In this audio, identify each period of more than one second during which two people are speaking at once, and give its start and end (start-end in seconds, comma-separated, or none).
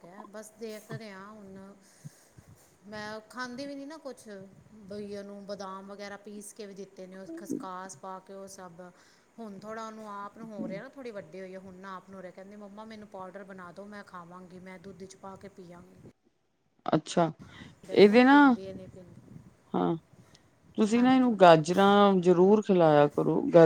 none